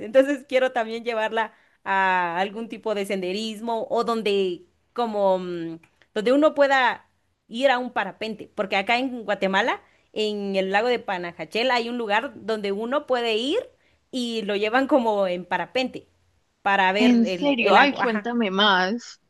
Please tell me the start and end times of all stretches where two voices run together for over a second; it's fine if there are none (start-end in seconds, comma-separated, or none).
17.0-18.3